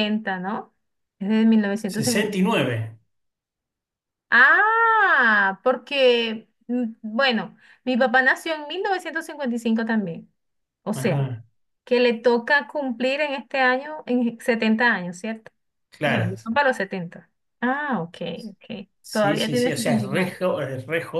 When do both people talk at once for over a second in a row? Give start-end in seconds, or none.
19.0-20.4